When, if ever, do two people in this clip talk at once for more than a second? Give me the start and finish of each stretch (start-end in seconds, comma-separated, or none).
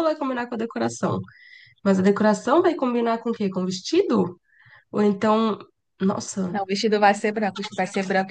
none